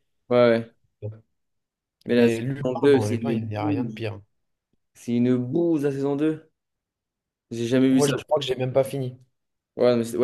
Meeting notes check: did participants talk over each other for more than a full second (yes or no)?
yes